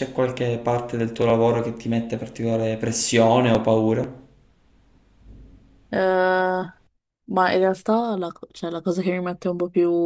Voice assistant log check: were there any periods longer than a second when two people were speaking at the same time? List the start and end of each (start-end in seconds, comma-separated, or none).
none